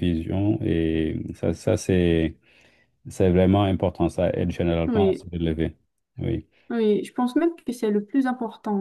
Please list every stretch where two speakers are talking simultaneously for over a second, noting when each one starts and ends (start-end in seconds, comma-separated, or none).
none